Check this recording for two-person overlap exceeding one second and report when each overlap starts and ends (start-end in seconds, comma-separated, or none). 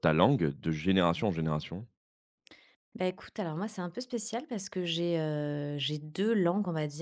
none